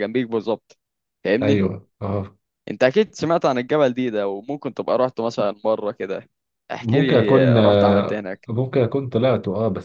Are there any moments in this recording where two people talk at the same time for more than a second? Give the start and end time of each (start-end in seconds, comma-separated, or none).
6.8-8.5